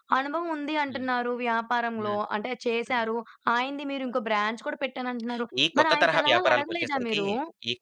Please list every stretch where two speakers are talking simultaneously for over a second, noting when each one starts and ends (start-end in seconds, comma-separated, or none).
5.6-7.2